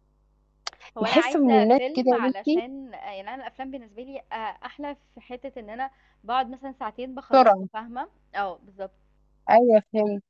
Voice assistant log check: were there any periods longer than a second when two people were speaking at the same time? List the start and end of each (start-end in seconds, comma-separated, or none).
1.0-2.6